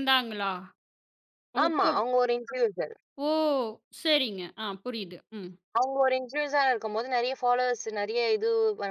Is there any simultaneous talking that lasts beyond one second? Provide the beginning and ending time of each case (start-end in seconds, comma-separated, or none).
none